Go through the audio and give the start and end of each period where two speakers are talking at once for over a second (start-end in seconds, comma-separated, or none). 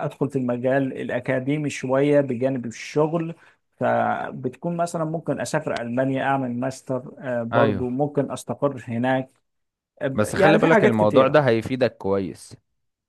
10.1-11.4